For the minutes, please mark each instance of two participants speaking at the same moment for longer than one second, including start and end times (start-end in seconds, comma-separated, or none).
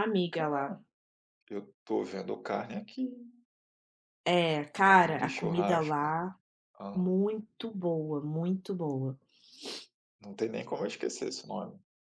4.8-6.1